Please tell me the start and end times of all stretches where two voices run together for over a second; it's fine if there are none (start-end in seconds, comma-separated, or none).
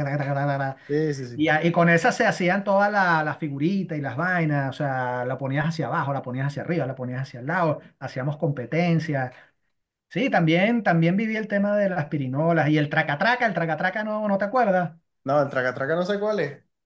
none